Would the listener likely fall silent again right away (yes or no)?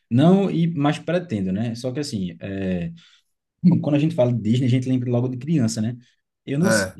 yes